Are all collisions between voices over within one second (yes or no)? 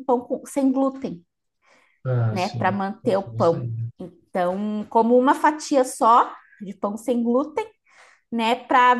no